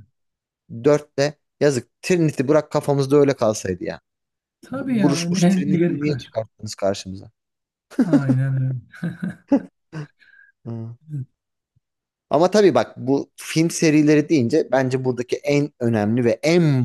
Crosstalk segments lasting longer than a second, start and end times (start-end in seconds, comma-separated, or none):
4.7-6.3